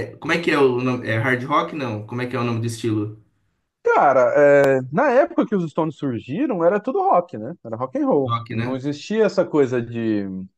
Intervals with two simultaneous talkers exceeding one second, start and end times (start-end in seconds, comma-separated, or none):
none